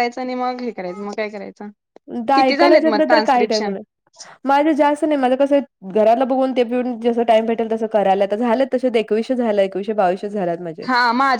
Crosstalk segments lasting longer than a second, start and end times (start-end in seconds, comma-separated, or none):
2.4-3.7